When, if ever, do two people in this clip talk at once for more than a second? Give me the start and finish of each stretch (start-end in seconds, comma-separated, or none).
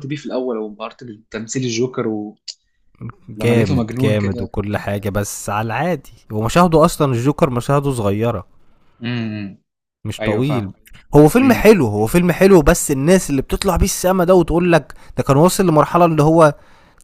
3.4-4.5